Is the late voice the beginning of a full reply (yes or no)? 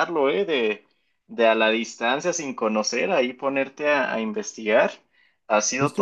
yes